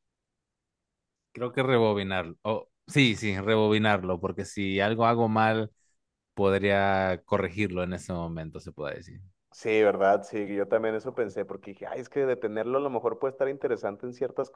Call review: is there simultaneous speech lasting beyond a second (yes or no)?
no